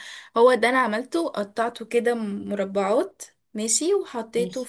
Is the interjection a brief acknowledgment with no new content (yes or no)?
yes